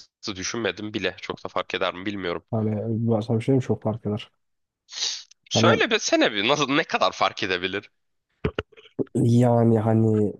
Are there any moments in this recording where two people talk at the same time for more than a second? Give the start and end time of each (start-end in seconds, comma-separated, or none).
none